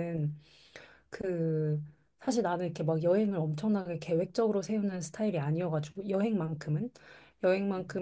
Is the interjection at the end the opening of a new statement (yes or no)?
no